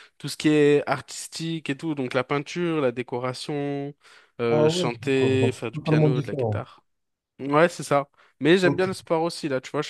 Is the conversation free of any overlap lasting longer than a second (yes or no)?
no